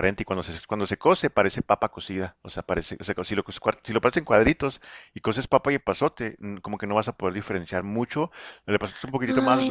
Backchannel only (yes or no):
no